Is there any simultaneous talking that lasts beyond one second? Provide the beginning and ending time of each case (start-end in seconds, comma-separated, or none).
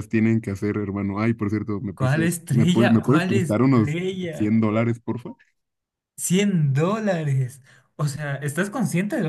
1.9-4.5